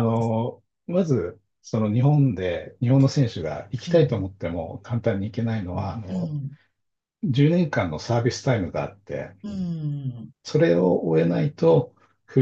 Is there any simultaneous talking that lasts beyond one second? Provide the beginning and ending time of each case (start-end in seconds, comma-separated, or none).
none